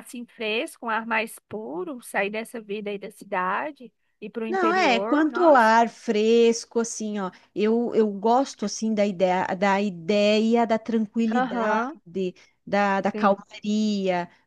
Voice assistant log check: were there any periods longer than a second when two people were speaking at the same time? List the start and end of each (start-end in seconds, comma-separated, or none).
4.5-5.7